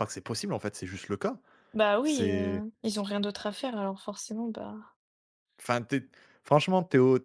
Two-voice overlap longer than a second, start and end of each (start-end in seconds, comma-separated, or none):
none